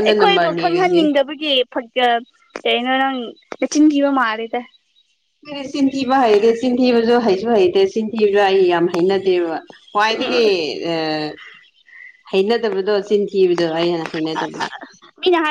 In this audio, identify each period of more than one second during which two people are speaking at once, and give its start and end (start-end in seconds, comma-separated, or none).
none